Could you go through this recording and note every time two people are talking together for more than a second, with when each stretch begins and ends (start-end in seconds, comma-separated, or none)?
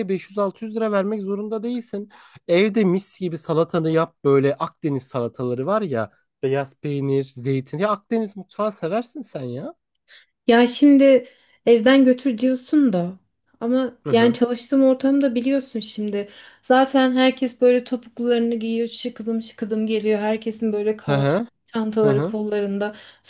none